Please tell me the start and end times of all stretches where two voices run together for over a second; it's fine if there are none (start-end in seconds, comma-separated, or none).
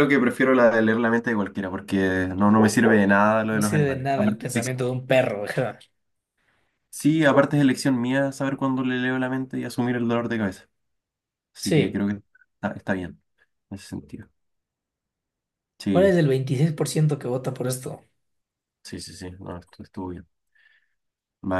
3.5-4.7